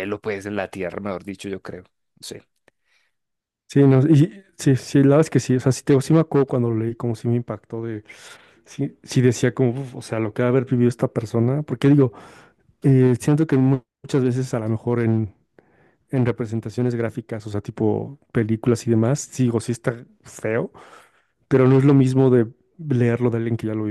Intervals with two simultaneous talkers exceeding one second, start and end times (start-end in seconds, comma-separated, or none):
none